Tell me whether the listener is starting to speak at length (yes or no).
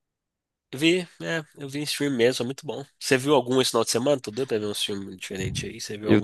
yes